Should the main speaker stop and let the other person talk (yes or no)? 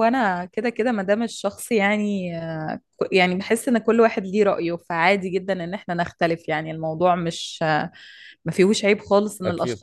no